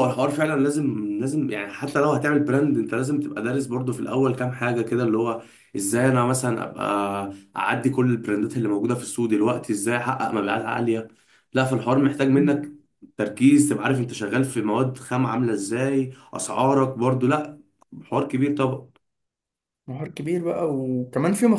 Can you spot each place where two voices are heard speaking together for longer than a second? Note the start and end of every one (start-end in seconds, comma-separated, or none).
none